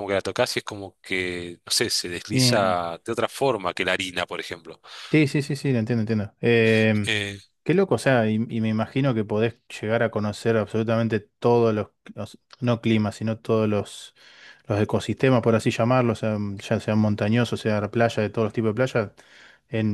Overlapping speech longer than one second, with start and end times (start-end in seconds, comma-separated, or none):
none